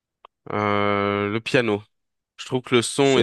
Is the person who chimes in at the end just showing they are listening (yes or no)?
yes